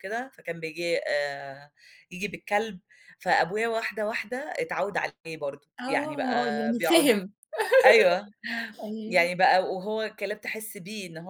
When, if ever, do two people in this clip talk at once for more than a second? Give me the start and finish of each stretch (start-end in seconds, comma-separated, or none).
5.8-7.1